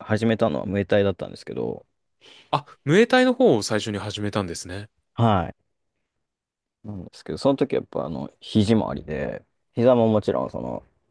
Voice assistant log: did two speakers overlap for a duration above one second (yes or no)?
no